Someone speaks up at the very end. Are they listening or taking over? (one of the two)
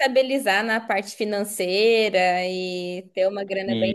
listening